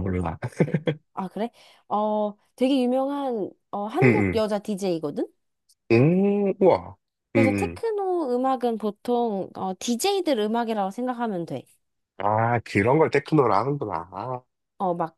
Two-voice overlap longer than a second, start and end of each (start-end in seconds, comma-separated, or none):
none